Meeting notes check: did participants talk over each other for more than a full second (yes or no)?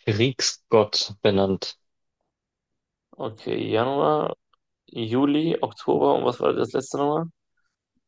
no